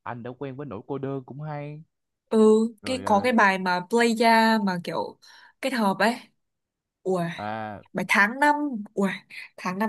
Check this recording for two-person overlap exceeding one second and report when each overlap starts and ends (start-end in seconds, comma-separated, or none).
none